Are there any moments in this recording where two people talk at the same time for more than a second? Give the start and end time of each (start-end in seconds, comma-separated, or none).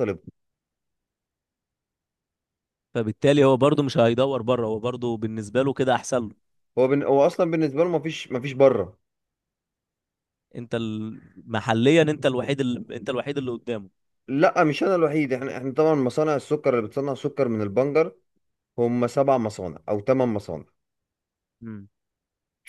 none